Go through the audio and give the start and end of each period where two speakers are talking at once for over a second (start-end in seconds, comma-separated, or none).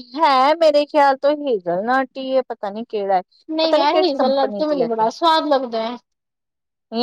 3.6-5.0